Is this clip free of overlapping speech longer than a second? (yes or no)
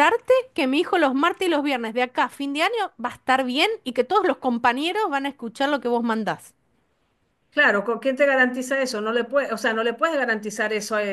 yes